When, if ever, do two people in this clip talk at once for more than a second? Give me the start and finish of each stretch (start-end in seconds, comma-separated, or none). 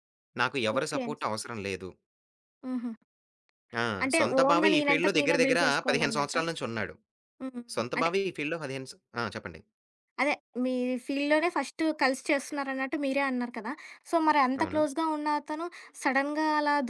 4.0-6.4